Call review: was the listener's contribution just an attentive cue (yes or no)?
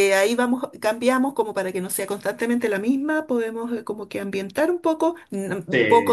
yes